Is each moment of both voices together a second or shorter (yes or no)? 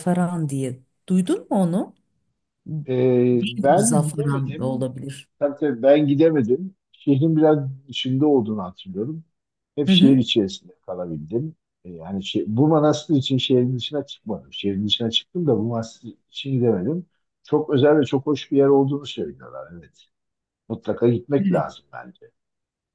no